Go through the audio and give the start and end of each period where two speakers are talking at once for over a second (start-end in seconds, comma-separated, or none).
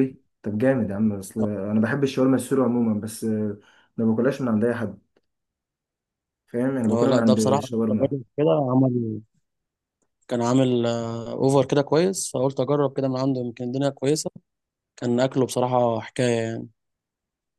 6.9-8.1